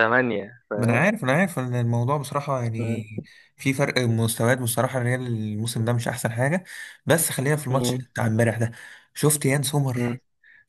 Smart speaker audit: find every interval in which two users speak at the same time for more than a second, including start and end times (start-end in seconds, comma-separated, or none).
none